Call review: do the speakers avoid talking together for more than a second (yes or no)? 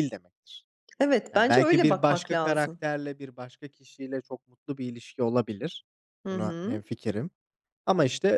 no